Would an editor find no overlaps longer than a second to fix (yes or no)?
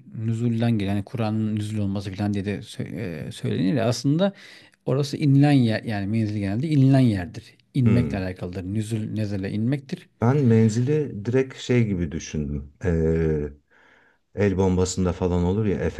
yes